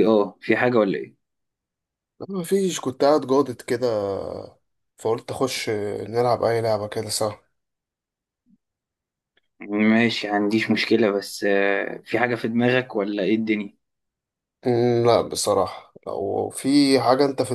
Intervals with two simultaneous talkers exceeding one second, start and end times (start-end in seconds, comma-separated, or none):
none